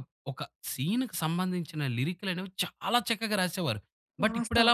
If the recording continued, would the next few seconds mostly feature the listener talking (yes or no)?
no